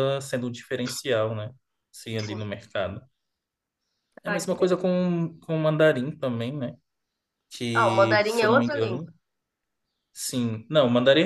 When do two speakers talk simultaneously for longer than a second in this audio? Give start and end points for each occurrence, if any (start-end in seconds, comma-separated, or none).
7.7-9.1